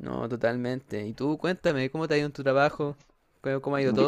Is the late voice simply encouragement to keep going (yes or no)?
yes